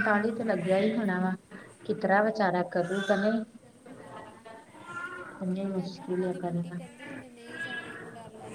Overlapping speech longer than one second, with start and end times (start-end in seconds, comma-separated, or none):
5.5-6.8